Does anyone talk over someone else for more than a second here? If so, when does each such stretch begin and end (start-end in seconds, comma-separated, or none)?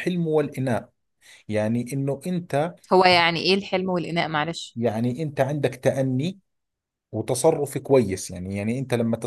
none